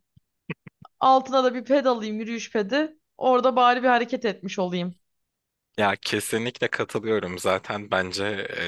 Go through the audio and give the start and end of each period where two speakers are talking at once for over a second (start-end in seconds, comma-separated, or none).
none